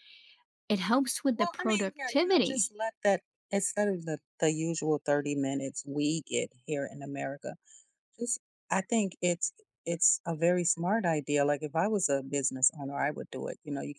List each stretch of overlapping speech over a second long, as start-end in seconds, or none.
1.3-2.7